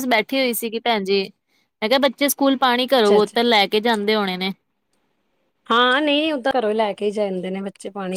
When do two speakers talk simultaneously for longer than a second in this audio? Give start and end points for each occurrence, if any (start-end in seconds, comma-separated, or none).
none